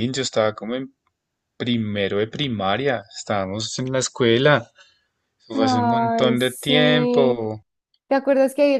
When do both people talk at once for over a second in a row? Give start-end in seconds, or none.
5.5-7.4